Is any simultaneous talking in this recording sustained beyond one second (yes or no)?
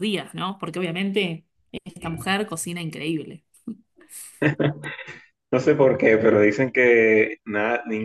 no